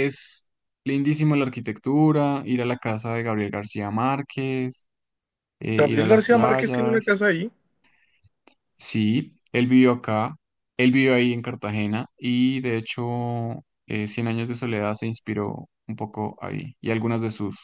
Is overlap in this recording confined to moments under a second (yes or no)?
no